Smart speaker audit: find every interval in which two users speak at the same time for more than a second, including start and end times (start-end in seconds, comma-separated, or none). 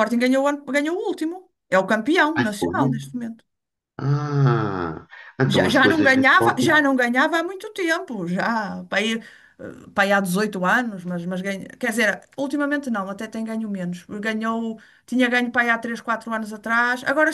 5.5-6.8